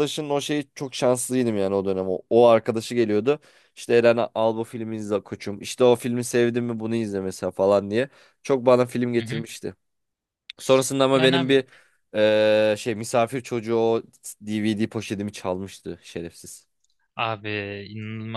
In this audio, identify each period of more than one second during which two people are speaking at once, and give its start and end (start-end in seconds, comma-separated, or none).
none